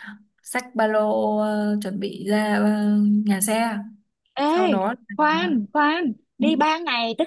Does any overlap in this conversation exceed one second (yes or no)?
no